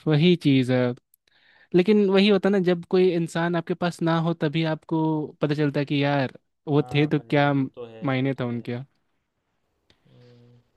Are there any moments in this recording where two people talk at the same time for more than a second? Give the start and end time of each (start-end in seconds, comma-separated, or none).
6.7-8.7